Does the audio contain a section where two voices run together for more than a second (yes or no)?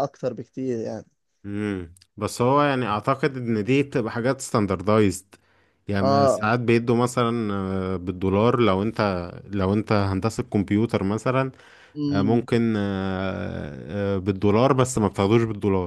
no